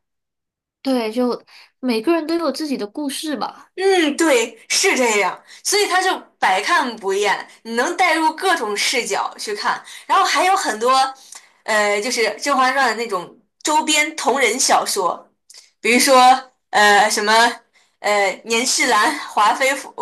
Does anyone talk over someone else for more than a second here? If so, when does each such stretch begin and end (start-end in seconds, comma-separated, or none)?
none